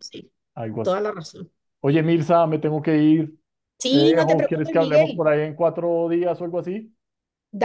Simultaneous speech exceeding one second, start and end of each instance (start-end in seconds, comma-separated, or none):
3.9-5.3